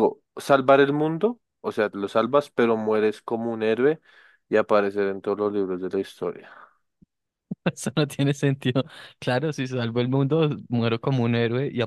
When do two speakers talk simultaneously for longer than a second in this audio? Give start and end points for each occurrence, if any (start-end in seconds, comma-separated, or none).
none